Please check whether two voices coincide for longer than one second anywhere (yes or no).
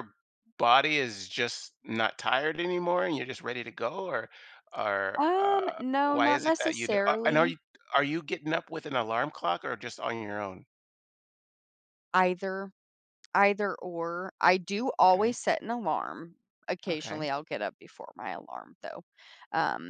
yes